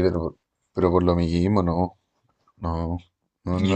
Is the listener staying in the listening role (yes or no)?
no